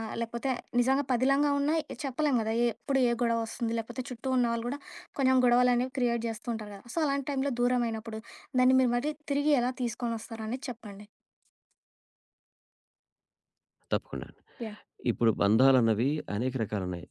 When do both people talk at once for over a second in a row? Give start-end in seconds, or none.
none